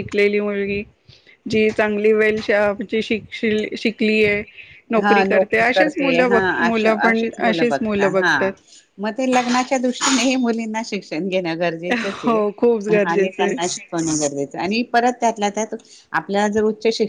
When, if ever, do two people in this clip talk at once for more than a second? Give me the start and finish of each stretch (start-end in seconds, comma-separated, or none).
none